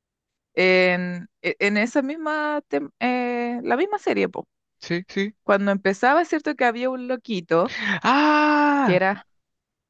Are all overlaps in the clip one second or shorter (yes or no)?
yes